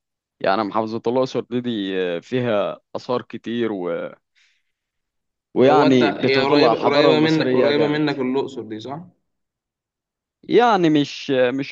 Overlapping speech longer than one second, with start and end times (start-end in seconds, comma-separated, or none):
5.6-8.0